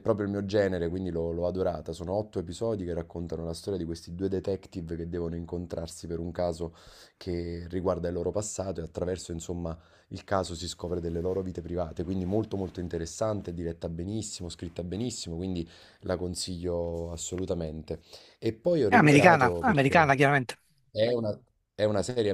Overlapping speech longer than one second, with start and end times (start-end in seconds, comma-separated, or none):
18.9-20.1